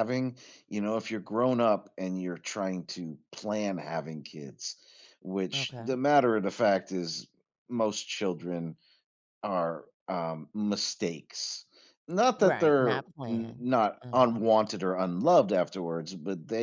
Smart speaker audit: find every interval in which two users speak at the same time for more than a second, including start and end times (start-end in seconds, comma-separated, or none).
12.4-14.4